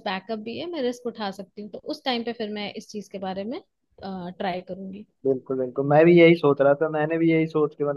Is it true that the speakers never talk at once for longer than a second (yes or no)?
yes